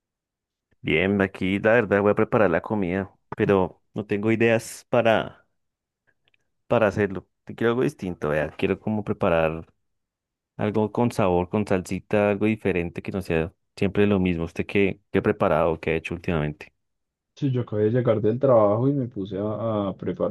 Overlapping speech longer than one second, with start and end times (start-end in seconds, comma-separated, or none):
none